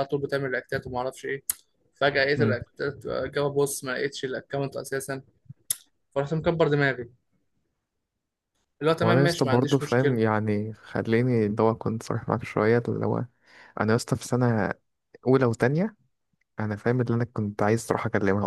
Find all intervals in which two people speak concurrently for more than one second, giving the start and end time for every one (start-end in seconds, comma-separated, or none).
9.0-10.2